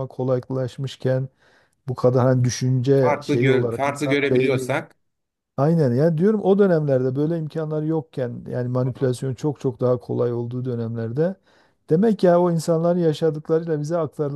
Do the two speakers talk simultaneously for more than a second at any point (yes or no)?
yes